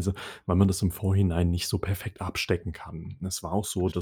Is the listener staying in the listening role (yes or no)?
yes